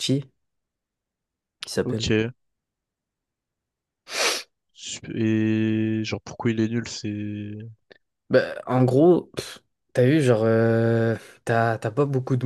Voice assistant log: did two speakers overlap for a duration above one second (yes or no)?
no